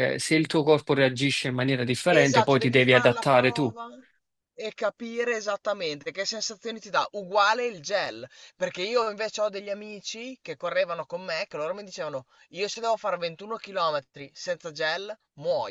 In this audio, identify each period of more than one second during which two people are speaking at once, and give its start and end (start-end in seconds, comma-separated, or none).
2.1-3.7